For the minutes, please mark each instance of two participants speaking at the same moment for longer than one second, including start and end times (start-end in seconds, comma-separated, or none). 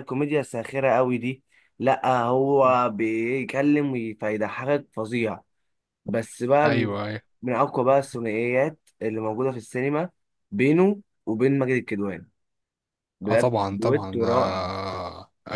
13.2-14.7